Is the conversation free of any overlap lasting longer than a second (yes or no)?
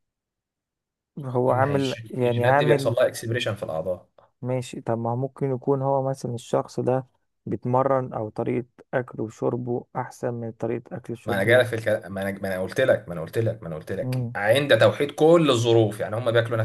no